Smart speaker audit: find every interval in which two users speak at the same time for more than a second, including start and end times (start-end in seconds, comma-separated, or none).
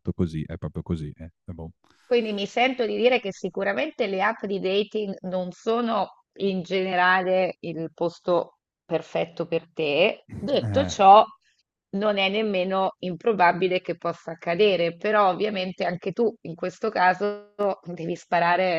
none